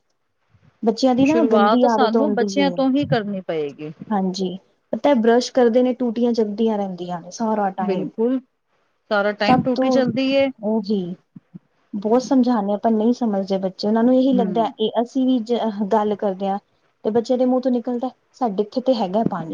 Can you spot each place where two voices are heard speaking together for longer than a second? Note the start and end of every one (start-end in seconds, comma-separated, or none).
1.3-2.5